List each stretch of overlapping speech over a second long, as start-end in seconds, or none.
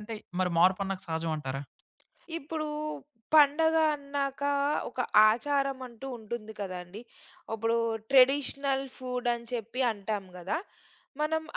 none